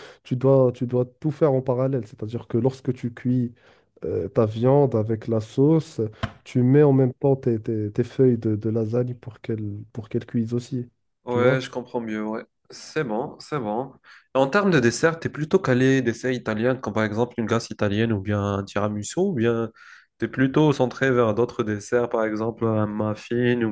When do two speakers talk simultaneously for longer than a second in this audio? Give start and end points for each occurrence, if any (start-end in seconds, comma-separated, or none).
none